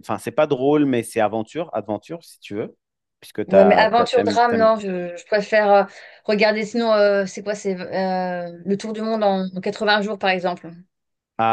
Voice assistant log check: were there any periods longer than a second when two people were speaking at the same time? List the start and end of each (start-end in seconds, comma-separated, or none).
3.5-4.7